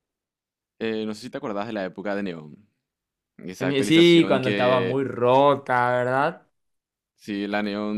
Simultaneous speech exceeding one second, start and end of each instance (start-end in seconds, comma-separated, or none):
3.6-5.0